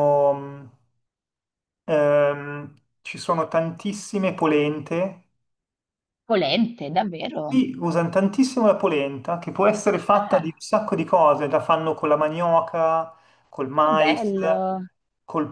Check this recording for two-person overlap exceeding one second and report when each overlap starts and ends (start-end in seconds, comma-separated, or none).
none